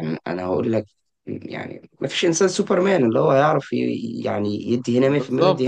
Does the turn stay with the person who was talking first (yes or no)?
no